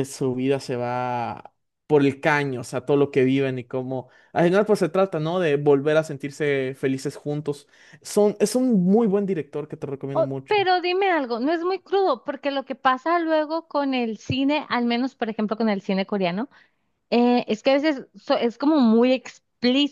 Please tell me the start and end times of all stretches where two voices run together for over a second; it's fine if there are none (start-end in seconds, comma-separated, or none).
none